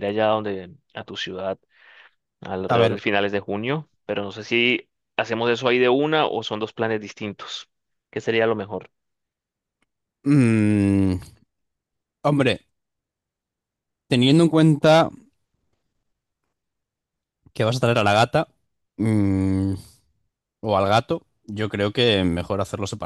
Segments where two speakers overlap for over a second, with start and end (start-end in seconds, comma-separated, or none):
none